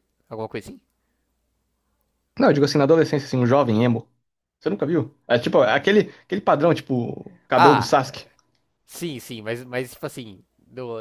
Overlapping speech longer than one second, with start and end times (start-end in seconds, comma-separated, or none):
none